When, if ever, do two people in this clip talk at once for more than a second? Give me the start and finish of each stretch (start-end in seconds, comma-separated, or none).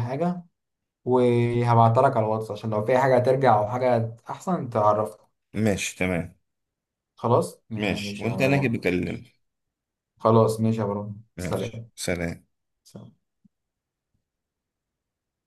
7.8-9.2